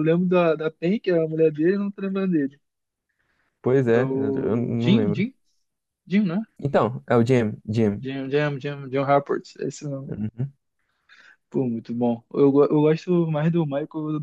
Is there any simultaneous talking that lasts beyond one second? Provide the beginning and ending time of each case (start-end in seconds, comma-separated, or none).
3.9-5.3